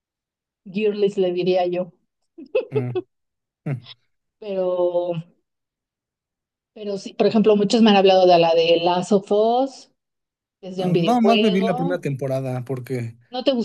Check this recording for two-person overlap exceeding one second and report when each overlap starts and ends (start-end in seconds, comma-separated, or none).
10.8-12.0